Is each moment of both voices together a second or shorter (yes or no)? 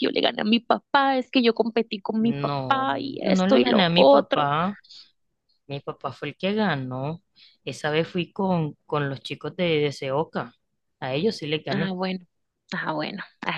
no